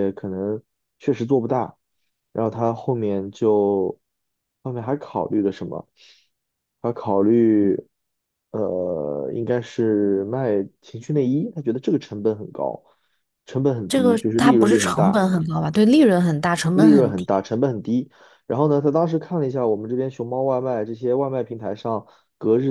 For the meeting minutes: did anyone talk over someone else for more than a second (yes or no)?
yes